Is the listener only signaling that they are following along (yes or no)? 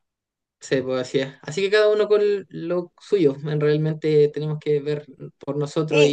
no